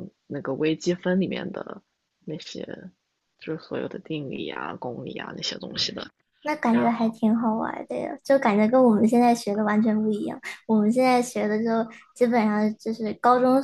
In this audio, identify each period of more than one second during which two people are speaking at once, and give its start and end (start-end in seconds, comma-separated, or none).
none